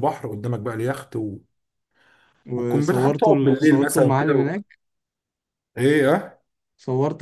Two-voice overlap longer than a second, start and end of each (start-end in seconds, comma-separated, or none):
2.5-4.5